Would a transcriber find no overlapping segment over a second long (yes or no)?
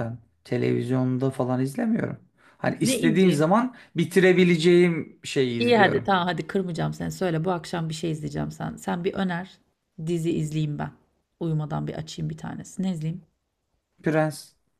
yes